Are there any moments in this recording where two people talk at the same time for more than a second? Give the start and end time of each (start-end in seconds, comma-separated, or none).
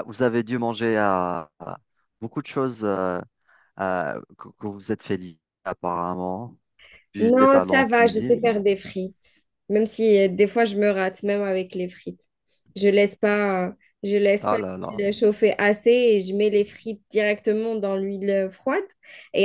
7.2-8.6